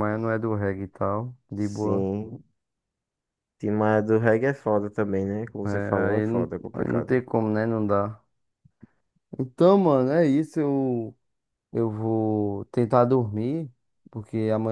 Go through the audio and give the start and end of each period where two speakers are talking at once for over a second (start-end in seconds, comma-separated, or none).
5.7-7.2